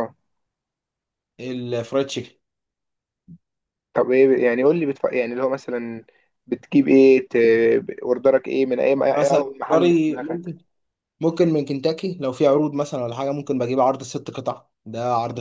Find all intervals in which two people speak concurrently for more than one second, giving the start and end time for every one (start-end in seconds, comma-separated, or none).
9.0-10.5